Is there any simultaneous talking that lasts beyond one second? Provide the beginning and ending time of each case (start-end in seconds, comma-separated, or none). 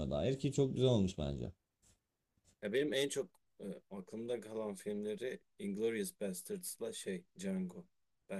none